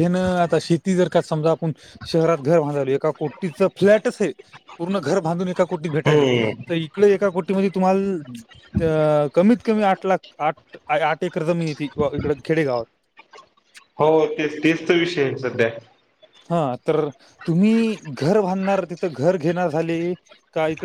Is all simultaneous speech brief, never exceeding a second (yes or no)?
yes